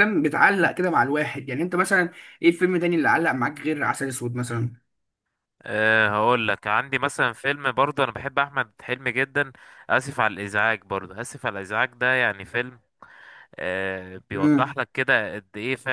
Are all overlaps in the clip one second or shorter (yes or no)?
yes